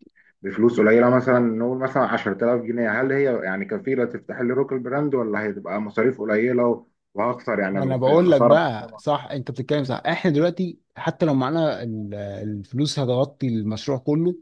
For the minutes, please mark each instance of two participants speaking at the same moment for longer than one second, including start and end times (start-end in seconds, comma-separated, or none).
7.7-9.0